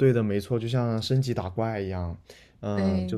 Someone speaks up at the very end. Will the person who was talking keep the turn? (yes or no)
yes